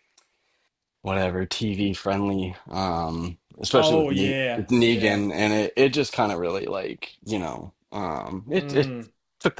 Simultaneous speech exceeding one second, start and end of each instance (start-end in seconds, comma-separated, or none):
3.7-5.2